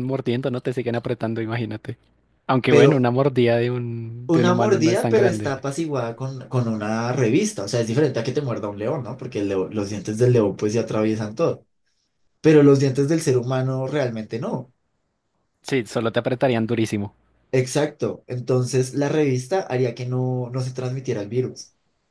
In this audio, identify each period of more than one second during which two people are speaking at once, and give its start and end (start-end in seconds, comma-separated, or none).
4.3-5.5